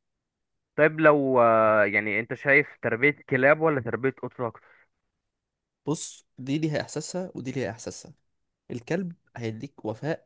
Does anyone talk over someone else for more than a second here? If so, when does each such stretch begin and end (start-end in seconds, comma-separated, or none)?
none